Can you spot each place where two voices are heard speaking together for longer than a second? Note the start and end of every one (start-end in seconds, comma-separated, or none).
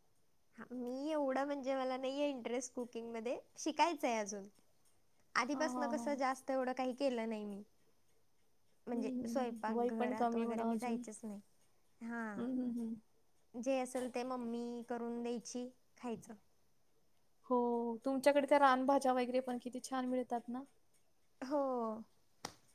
8.9-11.0